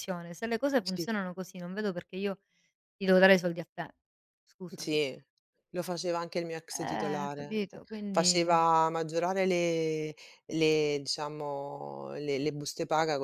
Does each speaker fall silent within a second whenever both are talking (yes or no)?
no